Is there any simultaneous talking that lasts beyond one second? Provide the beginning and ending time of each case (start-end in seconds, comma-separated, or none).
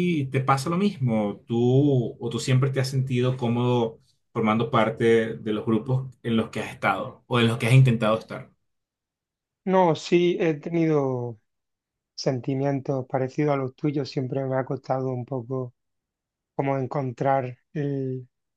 none